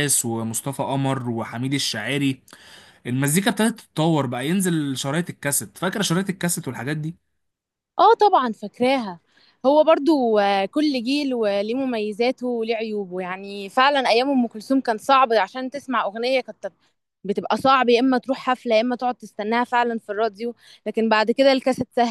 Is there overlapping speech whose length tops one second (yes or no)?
no